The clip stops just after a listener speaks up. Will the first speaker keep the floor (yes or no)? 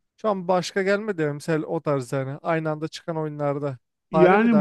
no